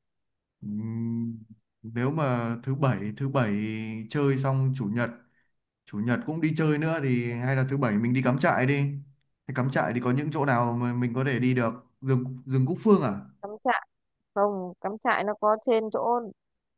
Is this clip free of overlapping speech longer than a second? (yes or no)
yes